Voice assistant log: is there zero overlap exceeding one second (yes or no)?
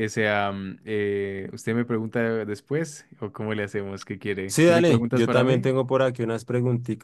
no